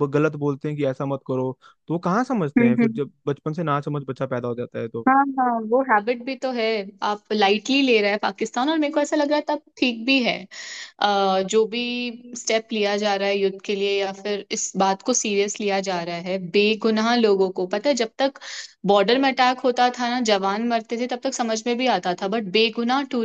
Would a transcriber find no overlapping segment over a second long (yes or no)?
yes